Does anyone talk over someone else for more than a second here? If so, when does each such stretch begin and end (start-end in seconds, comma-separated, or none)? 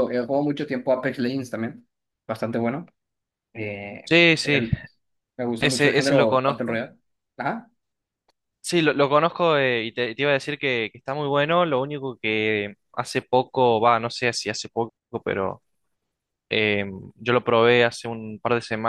5.6-6.8